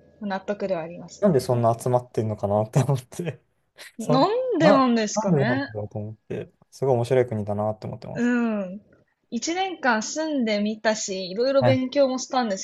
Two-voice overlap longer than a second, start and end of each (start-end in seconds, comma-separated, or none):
4.0-5.7